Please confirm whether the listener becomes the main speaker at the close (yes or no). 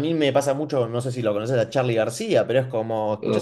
no